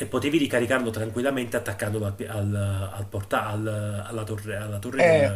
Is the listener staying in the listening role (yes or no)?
no